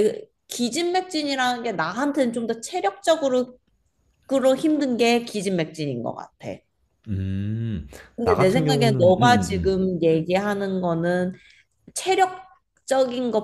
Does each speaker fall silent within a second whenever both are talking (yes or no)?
no